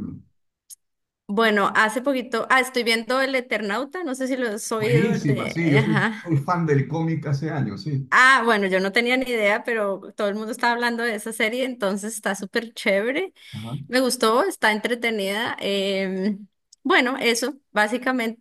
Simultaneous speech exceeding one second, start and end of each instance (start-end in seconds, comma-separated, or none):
4.8-6.3